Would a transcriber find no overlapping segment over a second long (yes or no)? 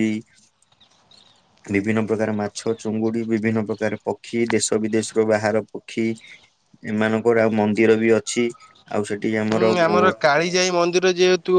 yes